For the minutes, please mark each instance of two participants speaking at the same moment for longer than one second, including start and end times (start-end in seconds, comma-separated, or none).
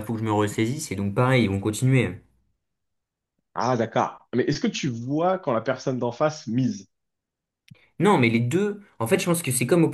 none